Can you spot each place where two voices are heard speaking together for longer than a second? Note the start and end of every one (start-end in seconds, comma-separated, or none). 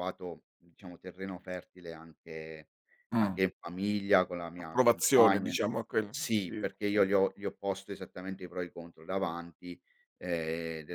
4.6-7.0